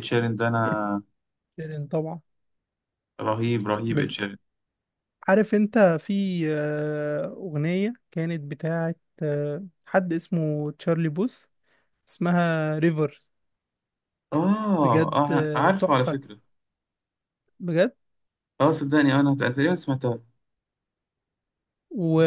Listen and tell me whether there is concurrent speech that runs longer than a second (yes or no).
yes